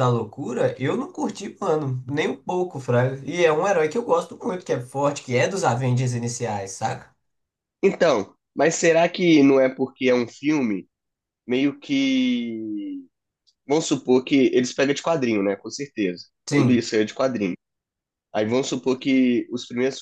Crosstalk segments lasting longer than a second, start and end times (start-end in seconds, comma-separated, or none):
none